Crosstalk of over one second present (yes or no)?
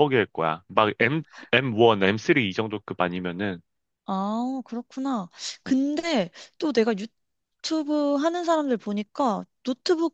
no